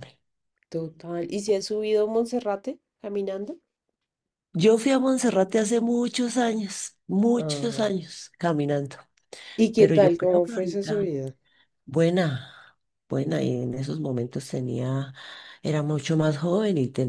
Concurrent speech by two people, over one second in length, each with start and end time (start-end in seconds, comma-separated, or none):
9.8-11.1